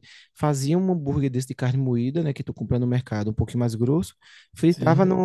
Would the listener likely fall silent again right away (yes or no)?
yes